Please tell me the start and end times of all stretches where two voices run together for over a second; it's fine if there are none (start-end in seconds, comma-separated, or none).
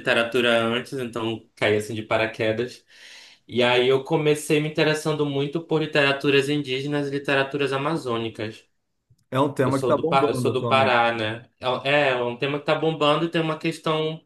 9.6-10.9